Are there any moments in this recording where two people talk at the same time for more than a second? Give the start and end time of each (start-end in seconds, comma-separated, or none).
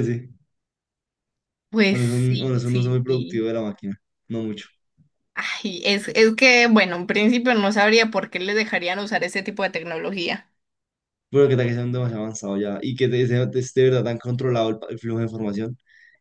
1.9-3.5